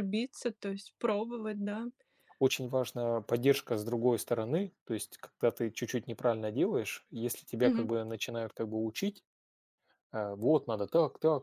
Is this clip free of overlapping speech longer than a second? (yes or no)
yes